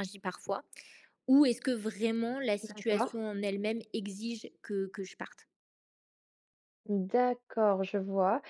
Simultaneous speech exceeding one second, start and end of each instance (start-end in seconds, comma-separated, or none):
none